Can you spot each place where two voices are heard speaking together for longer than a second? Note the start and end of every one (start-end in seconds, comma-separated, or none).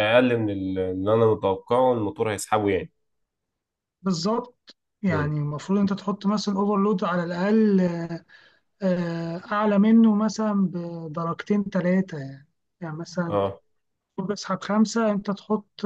none